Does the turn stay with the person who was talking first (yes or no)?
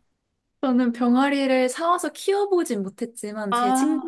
yes